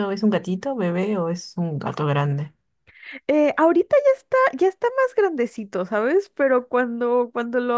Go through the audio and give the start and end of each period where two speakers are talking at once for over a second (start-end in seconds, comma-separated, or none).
none